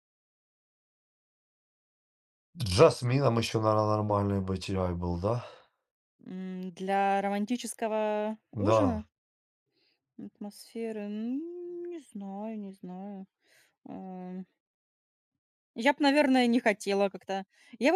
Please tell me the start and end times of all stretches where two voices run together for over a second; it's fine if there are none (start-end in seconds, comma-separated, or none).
none